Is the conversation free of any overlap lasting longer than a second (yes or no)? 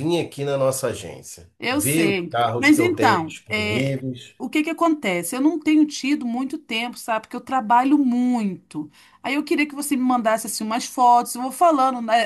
no